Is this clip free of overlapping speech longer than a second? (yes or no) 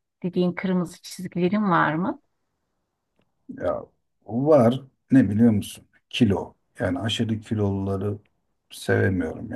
yes